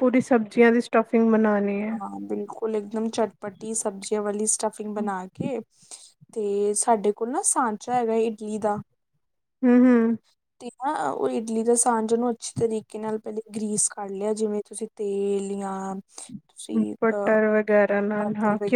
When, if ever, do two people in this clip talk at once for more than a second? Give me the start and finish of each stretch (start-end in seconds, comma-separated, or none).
none